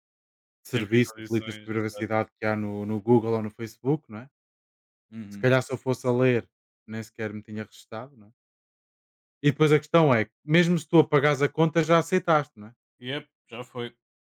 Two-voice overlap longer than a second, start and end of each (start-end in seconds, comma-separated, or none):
0.7-2.1